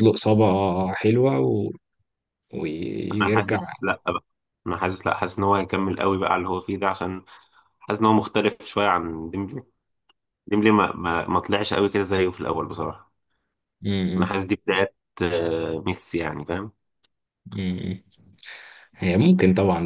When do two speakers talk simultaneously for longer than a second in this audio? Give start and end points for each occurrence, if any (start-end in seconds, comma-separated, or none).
none